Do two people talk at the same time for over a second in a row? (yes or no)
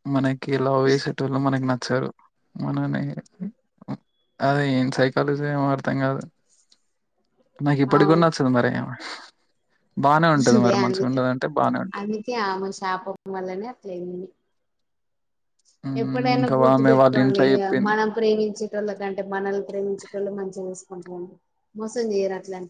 yes